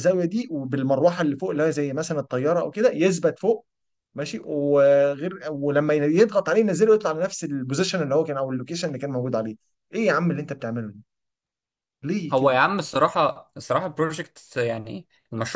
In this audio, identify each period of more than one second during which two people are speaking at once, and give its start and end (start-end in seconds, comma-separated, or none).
none